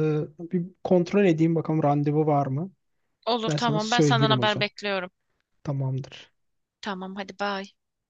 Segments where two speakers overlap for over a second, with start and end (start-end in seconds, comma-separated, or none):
3.5-4.7